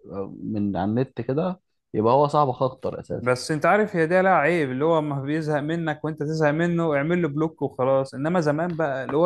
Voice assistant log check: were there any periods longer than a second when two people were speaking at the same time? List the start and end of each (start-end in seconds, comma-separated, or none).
none